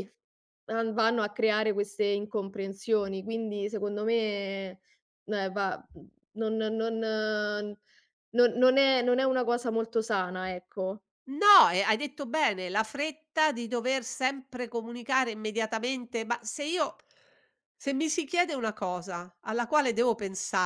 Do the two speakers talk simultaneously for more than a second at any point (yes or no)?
no